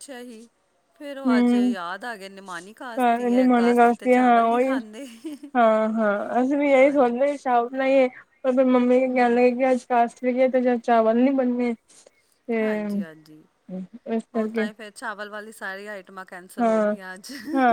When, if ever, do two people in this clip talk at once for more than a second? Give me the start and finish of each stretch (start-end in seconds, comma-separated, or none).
3.3-4.7